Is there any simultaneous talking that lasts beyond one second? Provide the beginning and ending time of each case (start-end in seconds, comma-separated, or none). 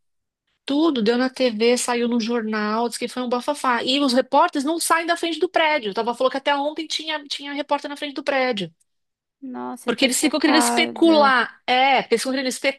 9.9-11.3